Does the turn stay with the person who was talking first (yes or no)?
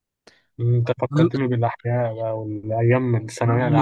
no